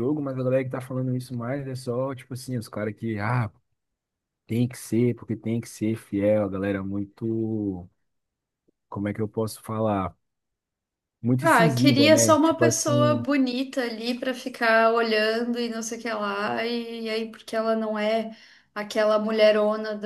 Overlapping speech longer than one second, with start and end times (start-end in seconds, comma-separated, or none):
11.4-13.2